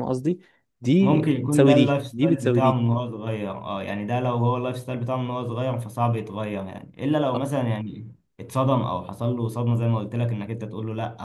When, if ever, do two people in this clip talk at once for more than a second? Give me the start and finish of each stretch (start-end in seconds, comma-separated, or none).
1.0-2.8